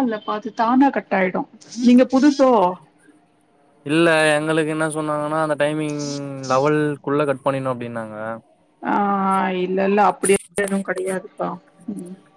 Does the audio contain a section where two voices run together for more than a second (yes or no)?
no